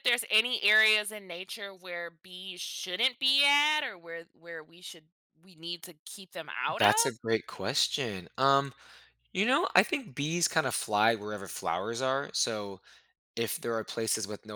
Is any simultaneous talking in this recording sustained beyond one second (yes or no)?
no